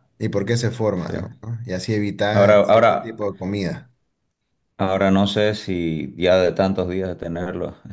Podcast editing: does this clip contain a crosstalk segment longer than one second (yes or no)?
no